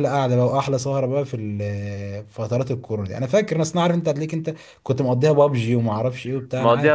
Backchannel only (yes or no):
no